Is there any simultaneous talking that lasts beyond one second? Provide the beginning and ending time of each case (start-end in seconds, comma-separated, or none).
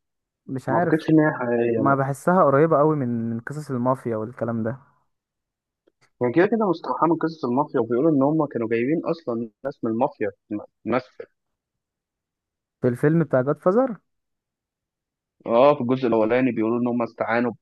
none